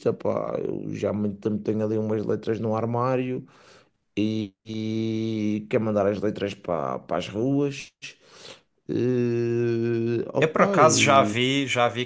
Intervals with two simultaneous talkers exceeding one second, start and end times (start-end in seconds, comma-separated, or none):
none